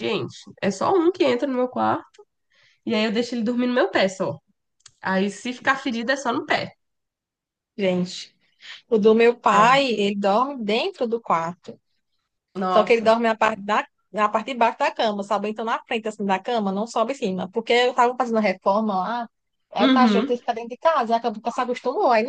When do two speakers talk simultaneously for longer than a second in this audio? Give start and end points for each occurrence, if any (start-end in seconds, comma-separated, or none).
none